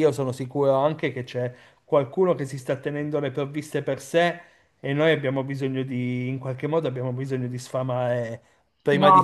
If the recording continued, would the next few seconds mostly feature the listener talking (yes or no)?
yes